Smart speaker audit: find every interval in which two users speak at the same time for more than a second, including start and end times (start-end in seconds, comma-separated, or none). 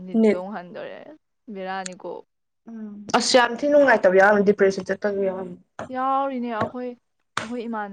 none